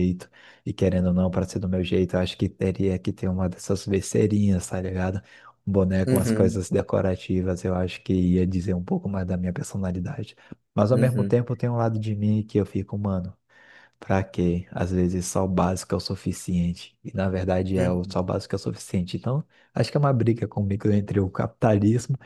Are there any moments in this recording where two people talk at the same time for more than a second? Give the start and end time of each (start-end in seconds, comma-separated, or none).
none